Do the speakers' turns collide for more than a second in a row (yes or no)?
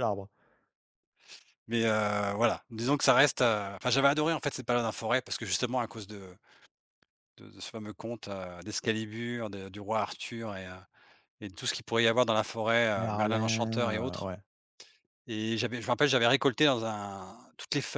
yes